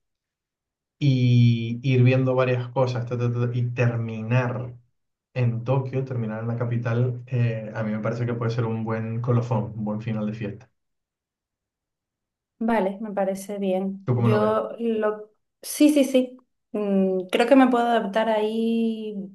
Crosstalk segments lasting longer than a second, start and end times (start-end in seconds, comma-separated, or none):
none